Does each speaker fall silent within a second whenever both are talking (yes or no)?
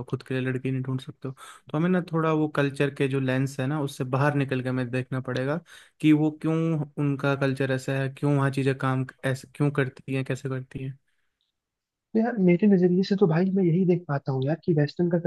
yes